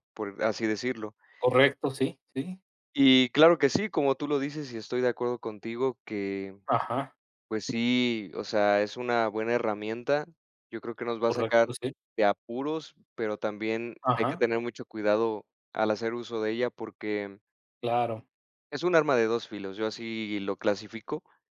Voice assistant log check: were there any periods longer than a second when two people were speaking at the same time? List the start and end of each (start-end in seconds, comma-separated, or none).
none